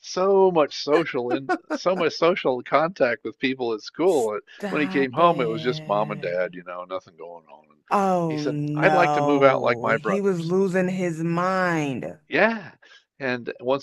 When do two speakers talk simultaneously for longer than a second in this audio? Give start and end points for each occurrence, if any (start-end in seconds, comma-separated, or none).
4.2-6.6, 8.3-10.5